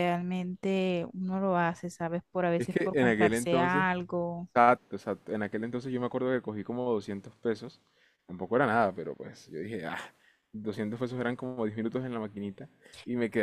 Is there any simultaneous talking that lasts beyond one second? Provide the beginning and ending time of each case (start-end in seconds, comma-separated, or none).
2.6-3.9